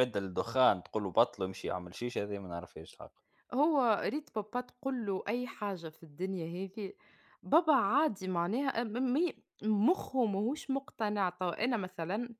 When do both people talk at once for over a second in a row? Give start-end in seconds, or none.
none